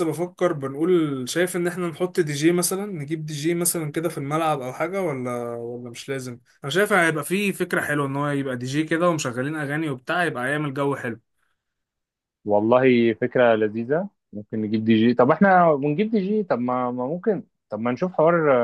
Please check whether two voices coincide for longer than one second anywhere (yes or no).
no